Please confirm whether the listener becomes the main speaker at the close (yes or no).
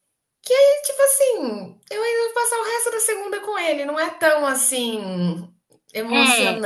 no